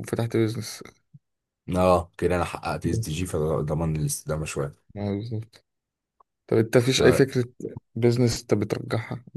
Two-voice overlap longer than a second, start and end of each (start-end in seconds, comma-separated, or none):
none